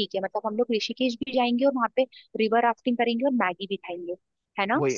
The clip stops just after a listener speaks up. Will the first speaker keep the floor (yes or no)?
no